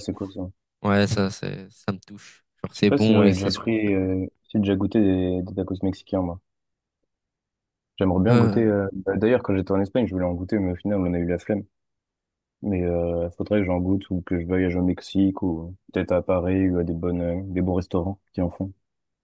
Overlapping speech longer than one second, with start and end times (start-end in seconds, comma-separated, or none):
2.7-4.0